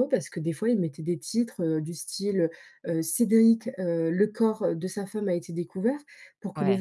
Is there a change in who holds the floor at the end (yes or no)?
no